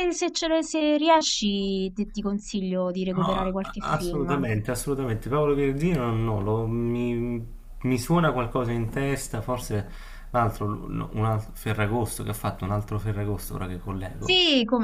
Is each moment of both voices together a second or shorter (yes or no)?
no